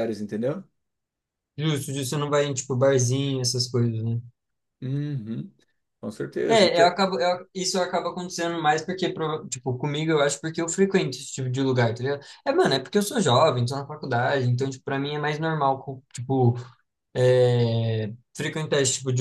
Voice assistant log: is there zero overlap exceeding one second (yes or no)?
yes